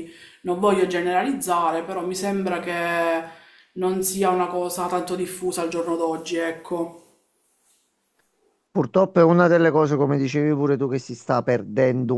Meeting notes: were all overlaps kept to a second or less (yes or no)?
yes